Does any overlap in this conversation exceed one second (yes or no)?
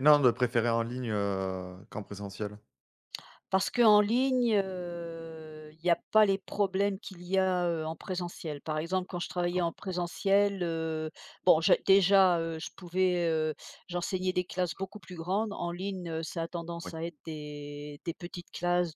no